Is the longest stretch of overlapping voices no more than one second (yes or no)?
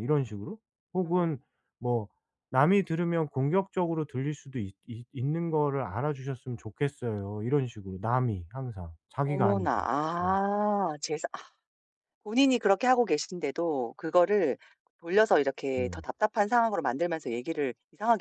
yes